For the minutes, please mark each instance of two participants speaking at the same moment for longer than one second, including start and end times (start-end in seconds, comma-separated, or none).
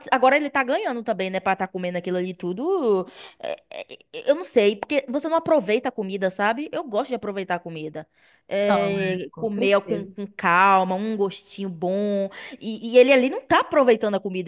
8.6-10.1